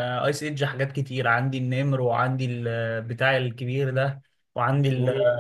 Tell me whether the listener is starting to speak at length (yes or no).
yes